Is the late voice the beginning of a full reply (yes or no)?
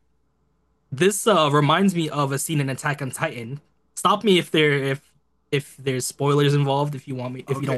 yes